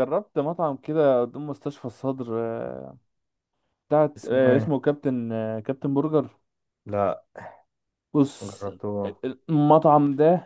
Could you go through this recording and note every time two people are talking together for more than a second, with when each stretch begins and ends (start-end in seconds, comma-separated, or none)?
none